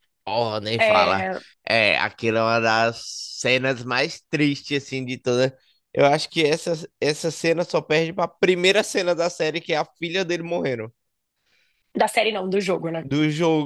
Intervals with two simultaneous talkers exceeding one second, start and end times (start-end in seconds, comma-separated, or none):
none